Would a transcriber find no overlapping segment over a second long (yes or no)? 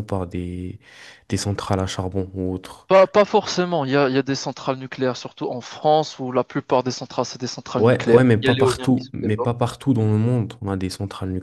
no